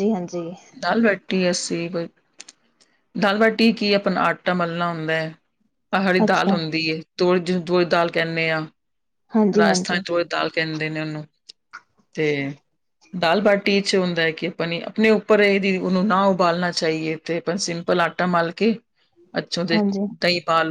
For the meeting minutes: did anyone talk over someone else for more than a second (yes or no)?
no